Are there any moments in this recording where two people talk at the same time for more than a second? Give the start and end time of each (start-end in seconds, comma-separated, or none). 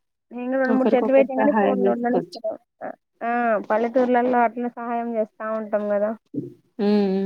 0.7-2.4